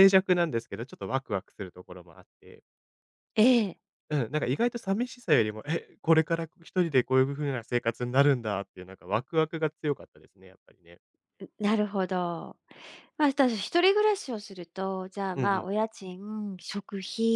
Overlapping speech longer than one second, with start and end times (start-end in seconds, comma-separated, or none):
none